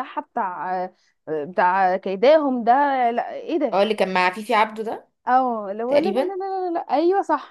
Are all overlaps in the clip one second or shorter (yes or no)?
yes